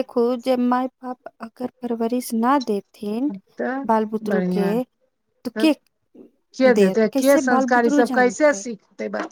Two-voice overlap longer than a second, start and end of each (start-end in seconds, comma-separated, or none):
6.8-8.6